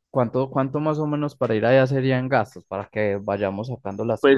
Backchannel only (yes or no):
no